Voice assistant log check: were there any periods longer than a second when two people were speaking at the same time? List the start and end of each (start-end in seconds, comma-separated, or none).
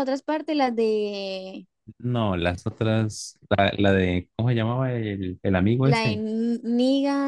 none